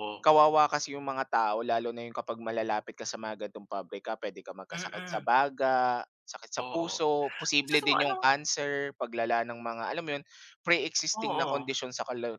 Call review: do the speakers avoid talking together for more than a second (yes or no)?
yes